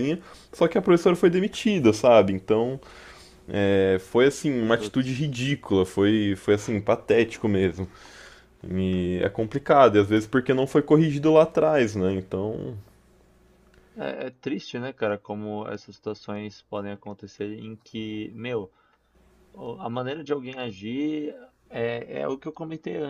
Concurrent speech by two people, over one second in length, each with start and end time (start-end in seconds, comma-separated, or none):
none